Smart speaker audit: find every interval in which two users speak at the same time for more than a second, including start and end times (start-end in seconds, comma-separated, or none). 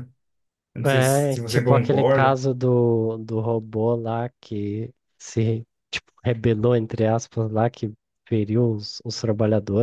0.9-2.4